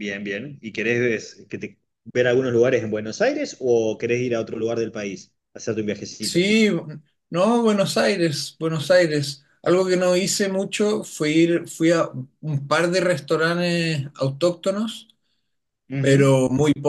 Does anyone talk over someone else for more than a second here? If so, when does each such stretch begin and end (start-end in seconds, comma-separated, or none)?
none